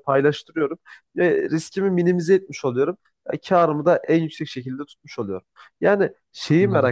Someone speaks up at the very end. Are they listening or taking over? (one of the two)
listening